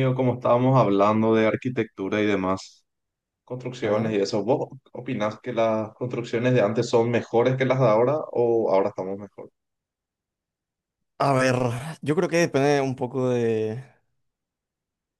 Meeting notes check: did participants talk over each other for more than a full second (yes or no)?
no